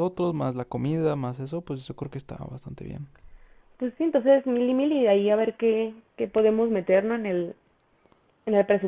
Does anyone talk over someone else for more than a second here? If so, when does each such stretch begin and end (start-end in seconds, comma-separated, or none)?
none